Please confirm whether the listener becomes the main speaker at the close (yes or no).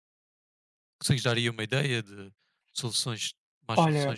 yes